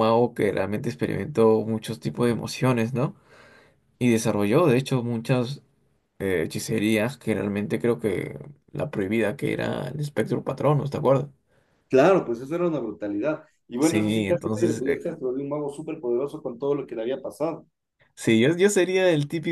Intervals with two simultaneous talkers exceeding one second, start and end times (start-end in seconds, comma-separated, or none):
13.8-15.1